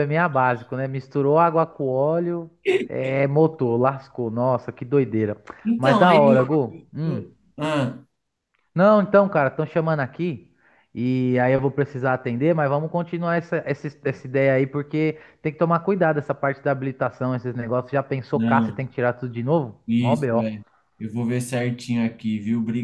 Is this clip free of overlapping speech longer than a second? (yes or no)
no